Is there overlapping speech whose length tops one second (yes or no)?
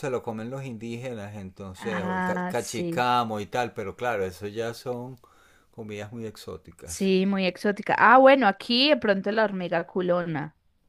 yes